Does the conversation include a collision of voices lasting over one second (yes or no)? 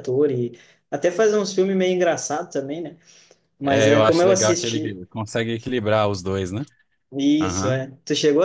yes